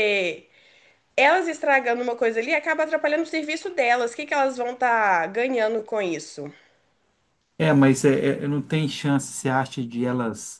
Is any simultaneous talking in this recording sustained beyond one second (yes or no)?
no